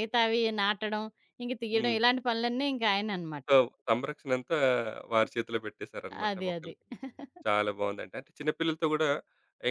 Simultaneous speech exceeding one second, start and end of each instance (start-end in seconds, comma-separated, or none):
none